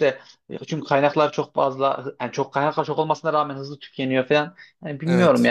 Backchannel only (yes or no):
yes